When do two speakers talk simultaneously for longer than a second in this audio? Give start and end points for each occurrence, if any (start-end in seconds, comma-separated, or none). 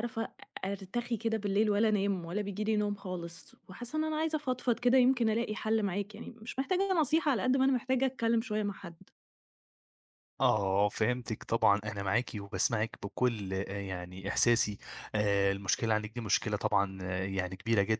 none